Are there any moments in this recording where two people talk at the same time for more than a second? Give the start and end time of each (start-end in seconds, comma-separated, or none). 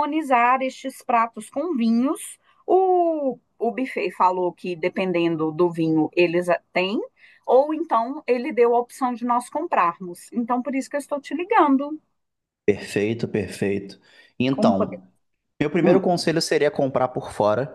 none